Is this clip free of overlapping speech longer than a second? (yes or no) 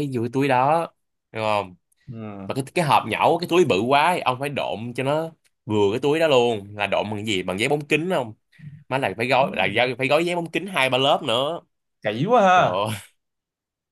yes